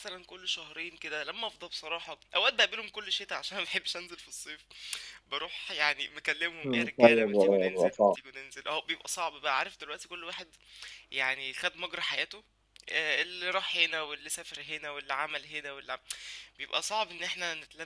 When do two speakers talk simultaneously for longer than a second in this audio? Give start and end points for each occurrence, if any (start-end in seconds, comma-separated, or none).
6.6-8.2